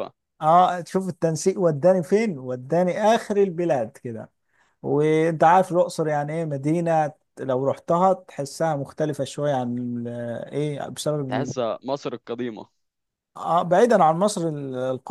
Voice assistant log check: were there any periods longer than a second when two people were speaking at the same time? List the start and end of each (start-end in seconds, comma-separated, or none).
none